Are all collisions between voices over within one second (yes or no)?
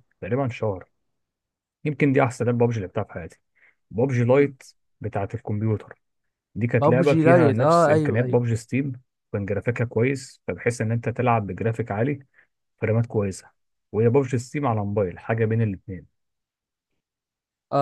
no